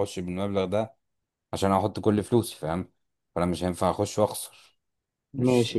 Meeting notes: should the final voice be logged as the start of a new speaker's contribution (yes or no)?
yes